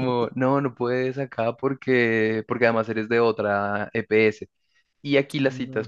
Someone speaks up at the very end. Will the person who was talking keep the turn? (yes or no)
yes